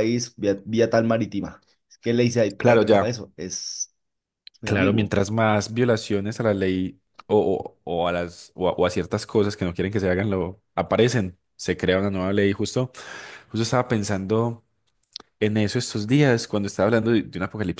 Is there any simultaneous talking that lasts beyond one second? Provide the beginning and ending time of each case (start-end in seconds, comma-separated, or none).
none